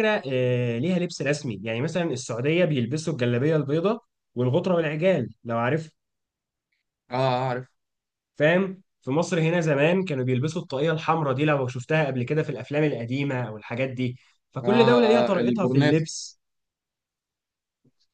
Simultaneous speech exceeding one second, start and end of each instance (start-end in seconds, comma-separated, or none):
14.6-16.0